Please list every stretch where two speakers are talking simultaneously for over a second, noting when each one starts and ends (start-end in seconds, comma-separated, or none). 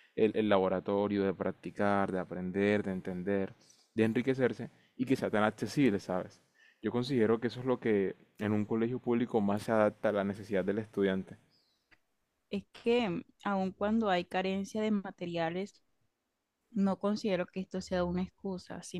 none